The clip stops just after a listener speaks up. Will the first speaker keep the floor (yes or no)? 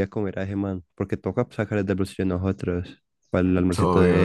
no